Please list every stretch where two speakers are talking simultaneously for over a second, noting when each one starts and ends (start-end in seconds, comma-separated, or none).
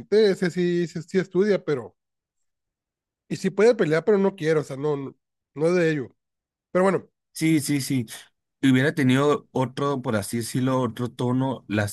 none